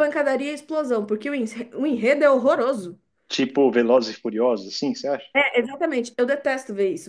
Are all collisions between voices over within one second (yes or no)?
yes